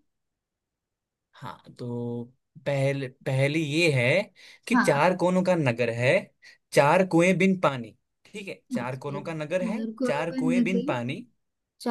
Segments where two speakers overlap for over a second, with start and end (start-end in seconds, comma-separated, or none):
8.8-10.9